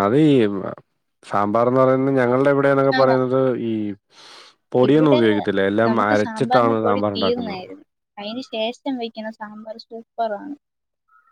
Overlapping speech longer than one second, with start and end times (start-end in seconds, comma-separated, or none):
5.9-7.7